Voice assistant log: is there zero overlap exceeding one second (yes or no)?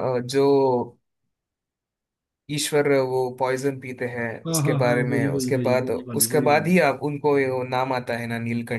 no